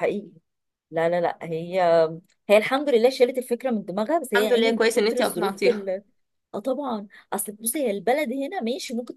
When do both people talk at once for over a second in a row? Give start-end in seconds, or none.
4.4-5.9